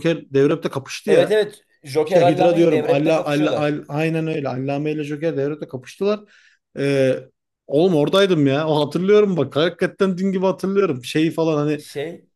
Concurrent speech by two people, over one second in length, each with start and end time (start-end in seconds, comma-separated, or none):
2.0-3.8